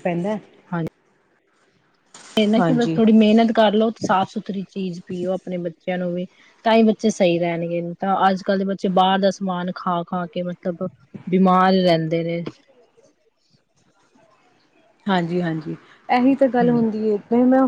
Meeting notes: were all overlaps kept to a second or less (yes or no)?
yes